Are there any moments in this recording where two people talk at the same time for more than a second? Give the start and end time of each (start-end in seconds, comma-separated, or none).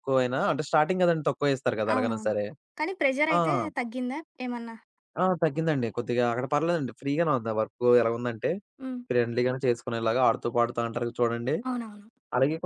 none